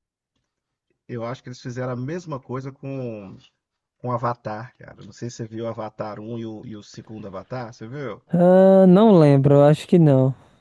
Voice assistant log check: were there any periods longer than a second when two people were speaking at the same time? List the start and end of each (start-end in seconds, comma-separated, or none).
none